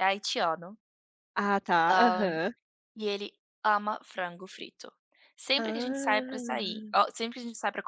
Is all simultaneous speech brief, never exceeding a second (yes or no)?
no